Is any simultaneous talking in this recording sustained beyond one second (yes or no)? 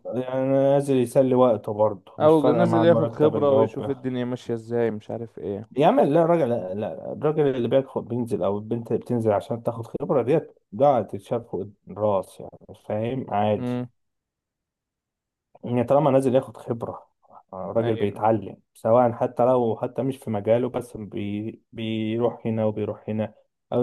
yes